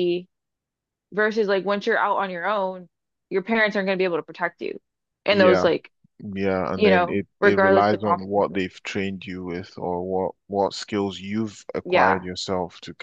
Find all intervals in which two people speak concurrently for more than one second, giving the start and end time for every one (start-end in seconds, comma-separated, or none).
6.7-8.6